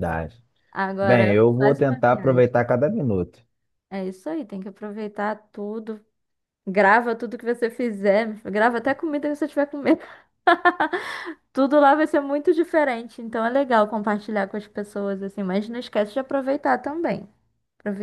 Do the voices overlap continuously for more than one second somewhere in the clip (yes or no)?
yes